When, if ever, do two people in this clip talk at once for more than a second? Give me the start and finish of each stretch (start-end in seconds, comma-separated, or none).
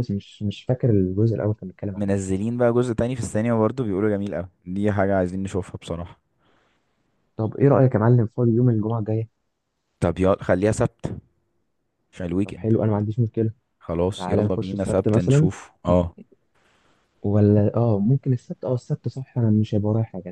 14.1-15.5